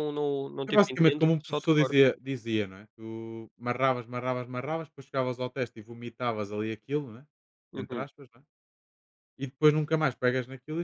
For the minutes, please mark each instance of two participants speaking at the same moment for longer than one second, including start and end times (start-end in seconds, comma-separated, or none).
0.7-2.0